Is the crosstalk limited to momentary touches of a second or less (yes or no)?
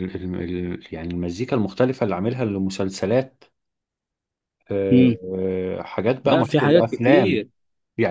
no